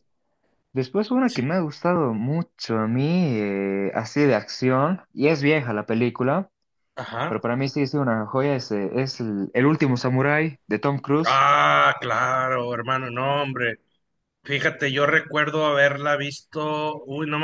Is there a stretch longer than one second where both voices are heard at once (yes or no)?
no